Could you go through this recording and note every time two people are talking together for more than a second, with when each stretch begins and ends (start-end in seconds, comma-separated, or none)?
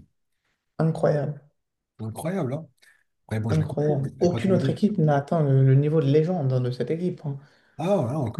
3.5-4.8